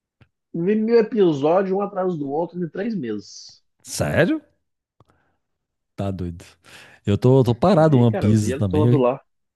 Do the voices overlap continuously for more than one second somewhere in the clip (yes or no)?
yes